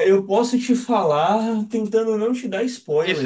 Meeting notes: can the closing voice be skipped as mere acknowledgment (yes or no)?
no